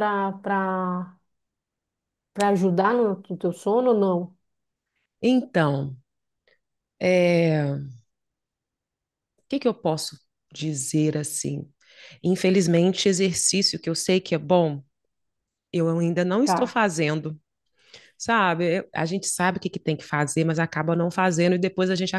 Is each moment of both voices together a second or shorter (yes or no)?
yes